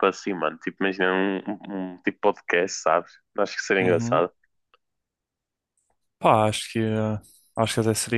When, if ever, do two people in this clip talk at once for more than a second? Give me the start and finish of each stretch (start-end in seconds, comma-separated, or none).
none